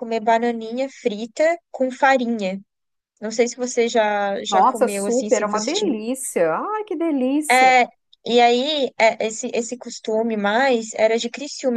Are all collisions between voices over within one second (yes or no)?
no